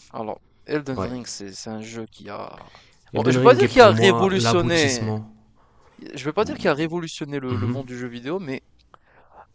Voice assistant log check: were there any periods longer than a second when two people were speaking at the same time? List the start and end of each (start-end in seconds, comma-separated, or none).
3.1-5.1